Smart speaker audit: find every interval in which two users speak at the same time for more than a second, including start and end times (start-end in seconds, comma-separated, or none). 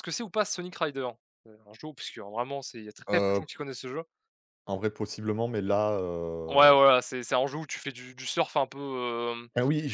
none